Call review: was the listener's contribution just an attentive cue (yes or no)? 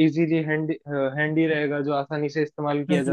no